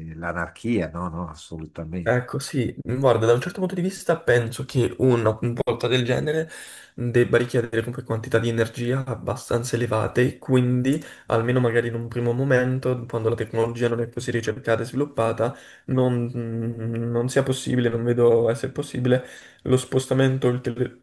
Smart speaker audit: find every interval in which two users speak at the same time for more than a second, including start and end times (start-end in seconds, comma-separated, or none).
none